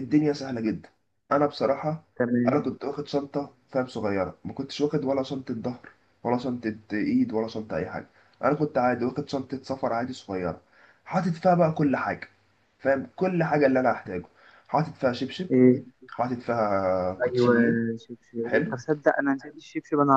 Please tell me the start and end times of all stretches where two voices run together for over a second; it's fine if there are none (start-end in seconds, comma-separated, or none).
none